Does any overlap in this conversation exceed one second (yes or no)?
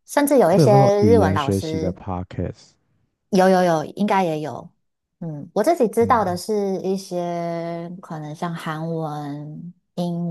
yes